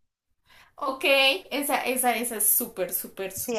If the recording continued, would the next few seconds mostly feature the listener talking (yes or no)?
yes